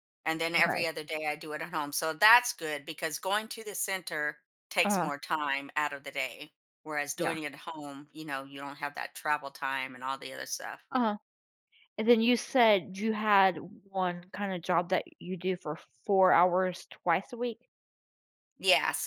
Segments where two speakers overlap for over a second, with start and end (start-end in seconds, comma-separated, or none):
none